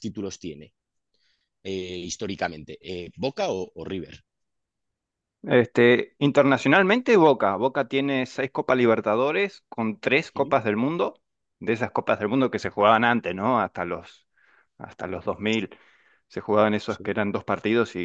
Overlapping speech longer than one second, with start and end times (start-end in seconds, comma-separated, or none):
none